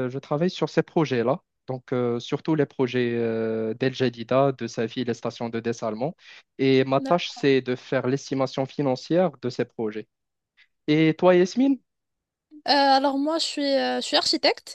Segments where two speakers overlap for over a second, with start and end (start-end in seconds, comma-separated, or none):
none